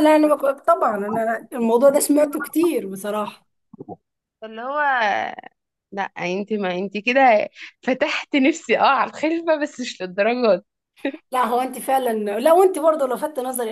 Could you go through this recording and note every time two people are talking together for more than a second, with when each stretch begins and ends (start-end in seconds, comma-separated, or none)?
none